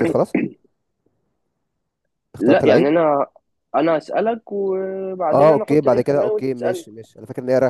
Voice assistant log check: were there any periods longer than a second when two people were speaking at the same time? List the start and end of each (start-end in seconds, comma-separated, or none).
5.3-6.8